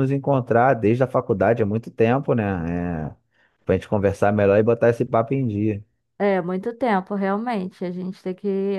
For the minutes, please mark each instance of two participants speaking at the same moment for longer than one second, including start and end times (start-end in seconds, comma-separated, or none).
none